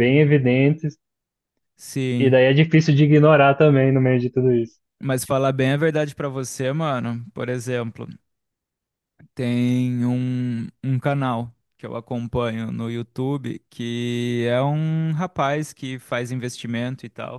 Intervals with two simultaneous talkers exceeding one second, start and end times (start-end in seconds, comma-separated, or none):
none